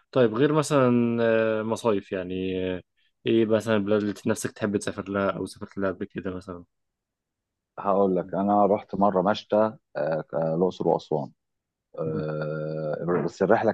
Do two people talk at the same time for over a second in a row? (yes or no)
no